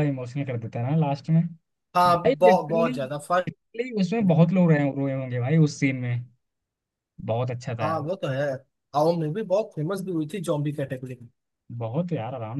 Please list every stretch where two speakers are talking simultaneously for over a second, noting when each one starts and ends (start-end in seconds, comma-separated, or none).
2.1-3.5